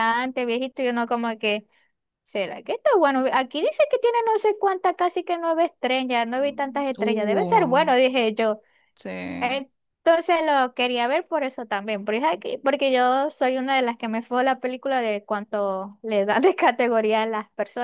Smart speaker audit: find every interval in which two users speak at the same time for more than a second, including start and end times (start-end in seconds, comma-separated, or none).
6.4-7.9